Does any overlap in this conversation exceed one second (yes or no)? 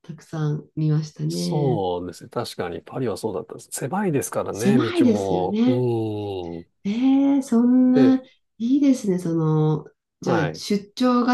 yes